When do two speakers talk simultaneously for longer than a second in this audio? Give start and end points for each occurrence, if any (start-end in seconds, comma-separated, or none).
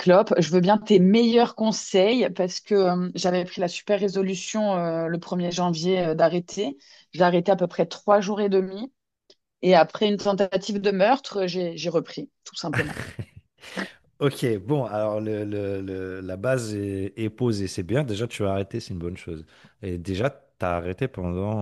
none